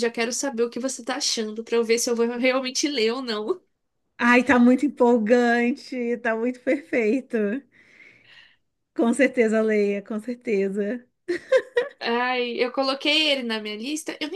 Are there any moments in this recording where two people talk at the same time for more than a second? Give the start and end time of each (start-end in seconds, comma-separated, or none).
none